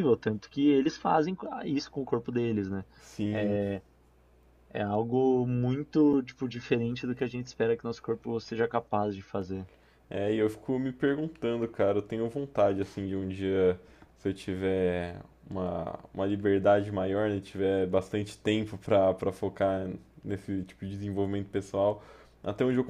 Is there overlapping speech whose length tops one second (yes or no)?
no